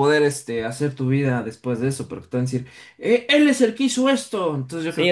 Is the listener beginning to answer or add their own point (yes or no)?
yes